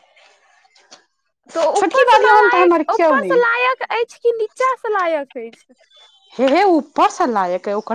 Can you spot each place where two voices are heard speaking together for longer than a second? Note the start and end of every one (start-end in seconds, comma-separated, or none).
1.8-3.4